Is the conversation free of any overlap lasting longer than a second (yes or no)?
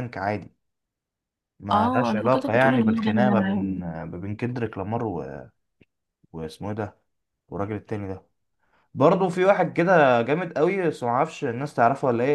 no